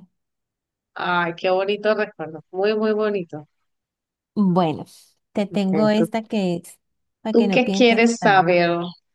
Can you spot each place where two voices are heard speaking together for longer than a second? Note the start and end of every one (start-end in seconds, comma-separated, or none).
7.3-8.5